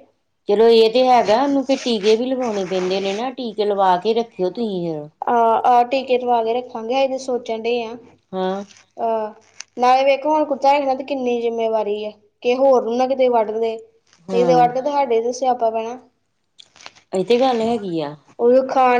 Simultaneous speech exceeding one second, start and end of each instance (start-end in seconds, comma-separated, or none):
none